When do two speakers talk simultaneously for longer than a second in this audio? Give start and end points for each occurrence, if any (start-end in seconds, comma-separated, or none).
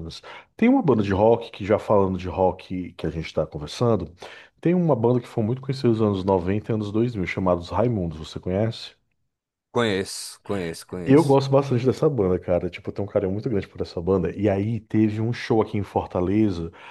none